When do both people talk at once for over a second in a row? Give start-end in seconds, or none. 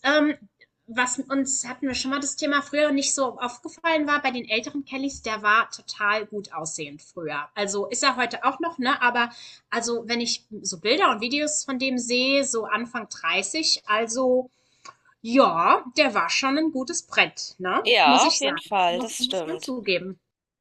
17.8-19.7